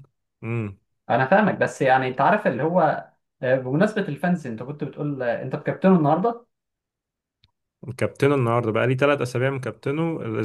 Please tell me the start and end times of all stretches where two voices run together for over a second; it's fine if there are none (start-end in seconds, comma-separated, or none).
none